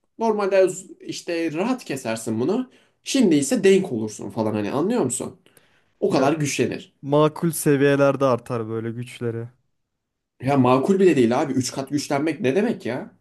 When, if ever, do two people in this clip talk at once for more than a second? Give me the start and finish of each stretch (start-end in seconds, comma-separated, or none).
none